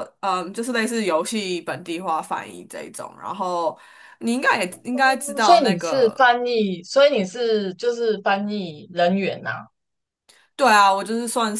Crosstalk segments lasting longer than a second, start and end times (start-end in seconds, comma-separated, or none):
5.0-6.3